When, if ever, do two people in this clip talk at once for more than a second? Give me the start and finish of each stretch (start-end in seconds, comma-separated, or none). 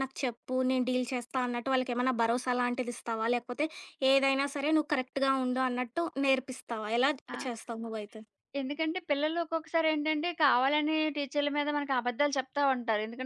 none